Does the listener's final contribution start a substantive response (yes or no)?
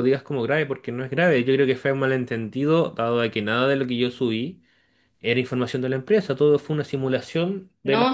yes